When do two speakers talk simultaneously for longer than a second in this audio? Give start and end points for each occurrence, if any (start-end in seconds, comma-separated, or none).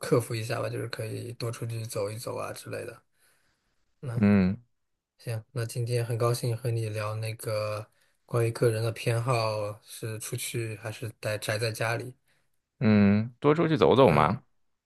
none